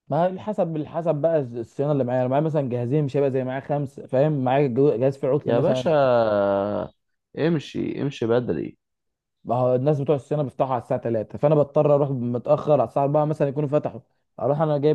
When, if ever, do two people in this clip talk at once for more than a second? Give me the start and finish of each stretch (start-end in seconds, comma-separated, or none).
none